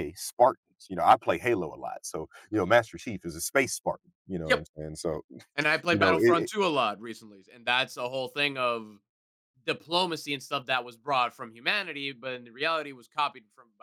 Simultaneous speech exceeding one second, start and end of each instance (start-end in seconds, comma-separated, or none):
none